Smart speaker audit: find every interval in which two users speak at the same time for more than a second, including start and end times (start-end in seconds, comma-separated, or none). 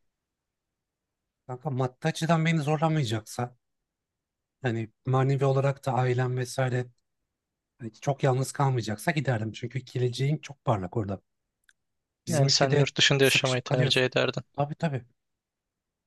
12.3-14.1